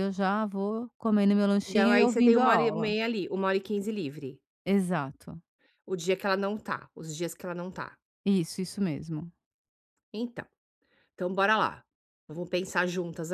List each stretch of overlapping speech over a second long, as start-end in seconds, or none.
1.6-3.0